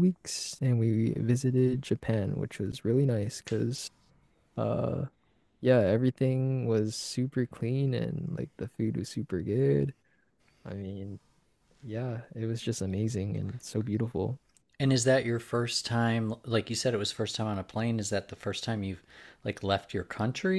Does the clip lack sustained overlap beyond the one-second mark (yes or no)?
yes